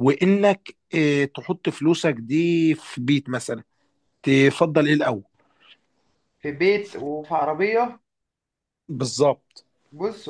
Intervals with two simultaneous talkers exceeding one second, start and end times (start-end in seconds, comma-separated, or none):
none